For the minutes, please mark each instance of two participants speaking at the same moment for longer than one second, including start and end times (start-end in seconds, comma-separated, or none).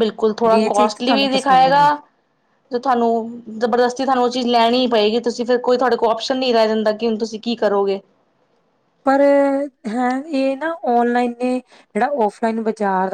0.5-1.9